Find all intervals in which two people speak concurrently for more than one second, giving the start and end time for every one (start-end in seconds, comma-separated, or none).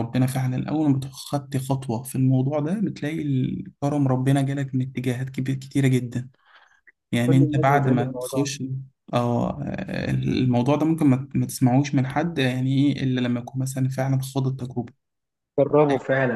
7.3-8.5